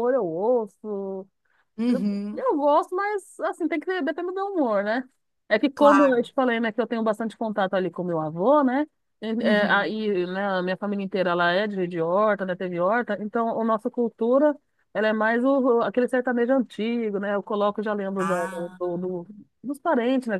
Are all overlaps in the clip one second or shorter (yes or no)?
yes